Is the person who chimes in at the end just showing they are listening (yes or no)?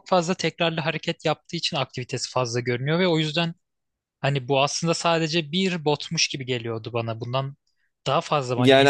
no